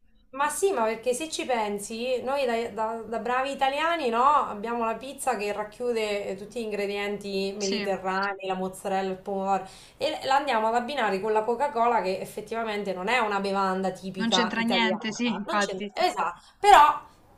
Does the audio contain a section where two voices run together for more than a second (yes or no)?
yes